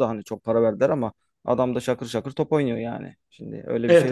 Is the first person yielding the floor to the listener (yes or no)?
yes